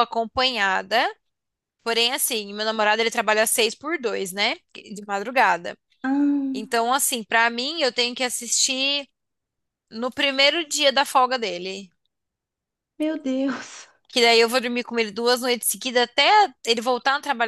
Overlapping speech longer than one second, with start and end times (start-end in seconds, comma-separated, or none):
none